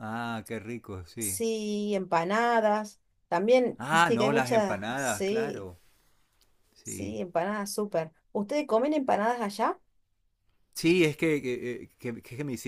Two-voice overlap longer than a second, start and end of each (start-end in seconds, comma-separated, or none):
3.8-5.7